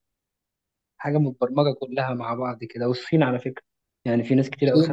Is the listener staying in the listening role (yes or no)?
no